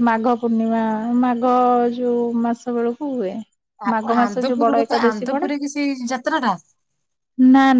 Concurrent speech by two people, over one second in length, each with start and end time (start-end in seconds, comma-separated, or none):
3.9-5.5